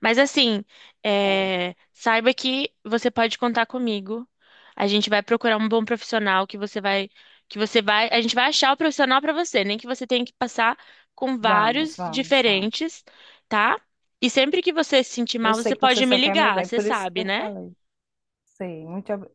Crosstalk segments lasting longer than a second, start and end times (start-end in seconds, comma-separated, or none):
11.4-12.9, 15.4-17.4